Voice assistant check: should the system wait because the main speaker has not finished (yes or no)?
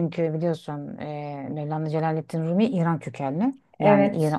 yes